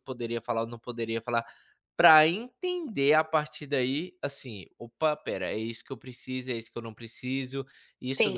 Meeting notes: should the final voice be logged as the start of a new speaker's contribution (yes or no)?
yes